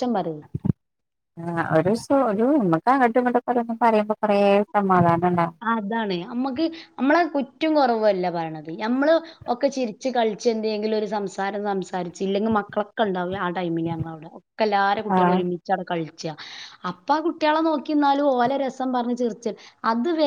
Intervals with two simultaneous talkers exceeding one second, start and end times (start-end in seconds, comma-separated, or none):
none